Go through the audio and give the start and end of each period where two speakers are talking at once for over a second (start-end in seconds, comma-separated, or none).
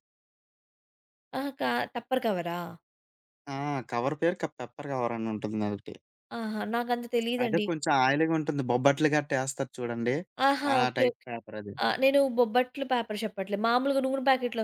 none